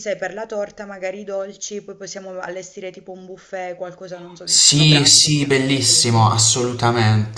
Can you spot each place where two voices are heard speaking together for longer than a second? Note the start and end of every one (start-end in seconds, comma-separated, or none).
4.4-6.1